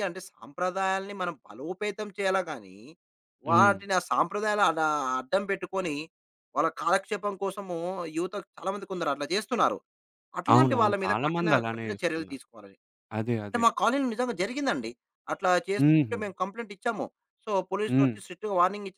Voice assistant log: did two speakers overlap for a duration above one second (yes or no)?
yes